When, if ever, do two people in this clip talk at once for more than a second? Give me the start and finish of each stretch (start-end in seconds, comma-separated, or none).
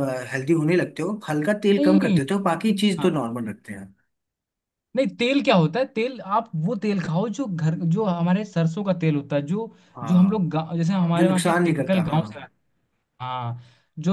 11.2-12.4